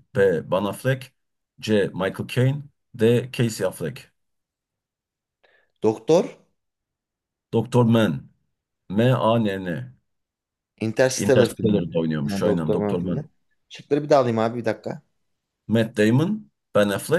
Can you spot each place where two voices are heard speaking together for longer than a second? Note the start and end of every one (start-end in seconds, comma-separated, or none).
11.2-13.2